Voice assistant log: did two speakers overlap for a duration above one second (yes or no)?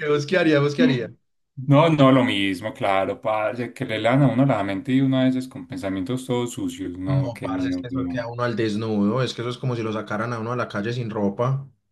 yes